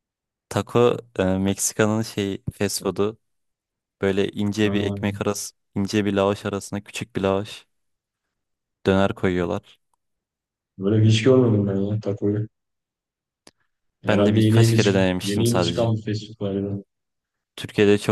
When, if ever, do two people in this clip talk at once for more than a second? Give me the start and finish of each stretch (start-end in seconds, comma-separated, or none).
14.1-15.9